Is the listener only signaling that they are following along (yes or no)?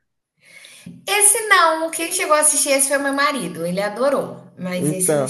no